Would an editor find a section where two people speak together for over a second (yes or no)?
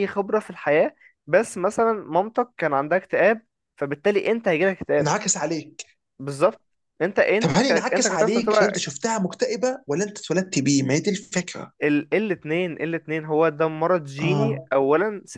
yes